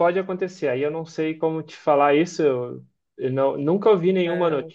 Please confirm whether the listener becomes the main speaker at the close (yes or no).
no